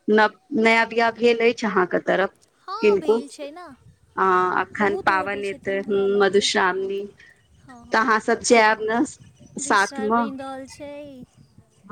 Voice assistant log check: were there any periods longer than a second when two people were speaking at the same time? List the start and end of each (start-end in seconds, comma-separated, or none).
4.8-6.9